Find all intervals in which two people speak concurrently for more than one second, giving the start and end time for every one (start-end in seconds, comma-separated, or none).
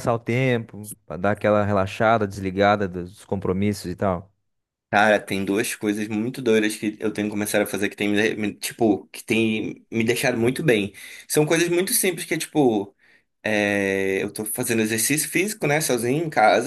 none